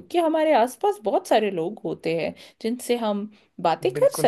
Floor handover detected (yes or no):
yes